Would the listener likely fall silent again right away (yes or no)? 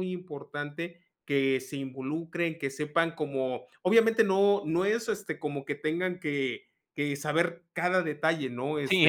no